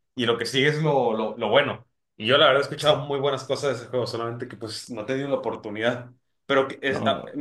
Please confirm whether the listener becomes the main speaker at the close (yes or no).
no